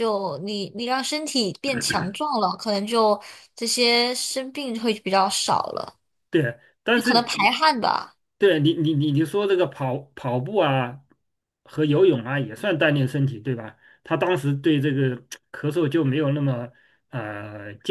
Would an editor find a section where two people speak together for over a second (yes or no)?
no